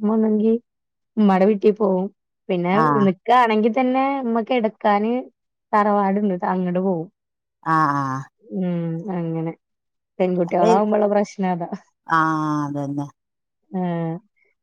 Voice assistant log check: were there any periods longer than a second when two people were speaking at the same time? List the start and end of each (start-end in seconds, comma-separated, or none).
none